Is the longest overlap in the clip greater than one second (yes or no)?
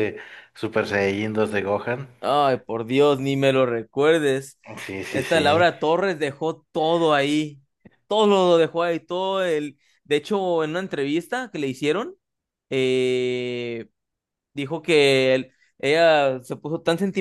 no